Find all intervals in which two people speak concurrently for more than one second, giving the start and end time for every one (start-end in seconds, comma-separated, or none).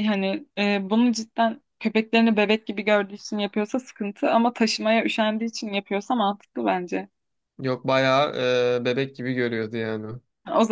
none